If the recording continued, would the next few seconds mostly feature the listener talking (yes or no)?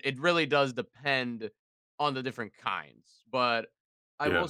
no